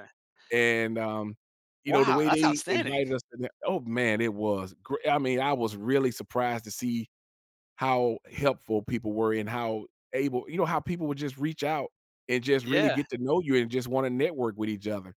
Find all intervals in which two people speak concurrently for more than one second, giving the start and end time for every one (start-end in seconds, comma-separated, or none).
1.8-3.0